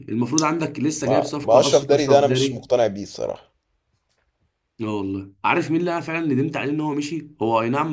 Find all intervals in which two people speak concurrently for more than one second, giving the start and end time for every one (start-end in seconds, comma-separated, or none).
1.1-2.6